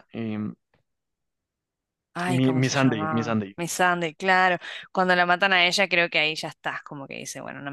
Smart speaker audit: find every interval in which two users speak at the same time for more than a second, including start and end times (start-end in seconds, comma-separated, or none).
2.3-3.6